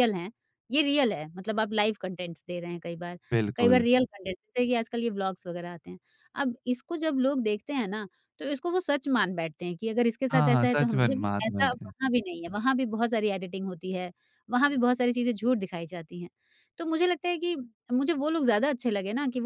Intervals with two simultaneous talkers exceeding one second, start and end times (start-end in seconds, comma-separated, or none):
10.3-11.9